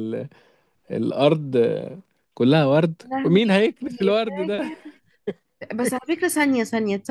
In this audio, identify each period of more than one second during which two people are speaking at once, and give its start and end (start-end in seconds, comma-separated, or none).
none